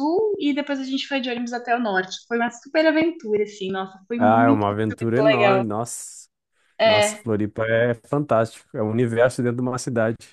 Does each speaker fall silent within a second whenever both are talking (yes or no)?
no